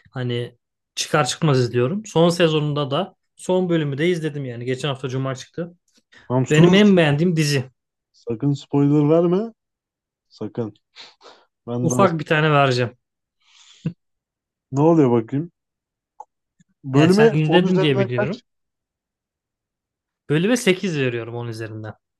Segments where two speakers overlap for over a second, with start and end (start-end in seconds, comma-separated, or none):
16.9-18.4